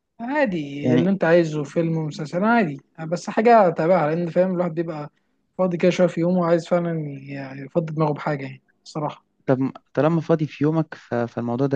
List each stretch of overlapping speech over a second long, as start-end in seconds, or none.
none